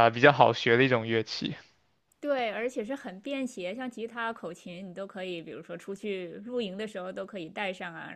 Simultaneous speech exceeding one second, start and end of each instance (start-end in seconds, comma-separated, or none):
none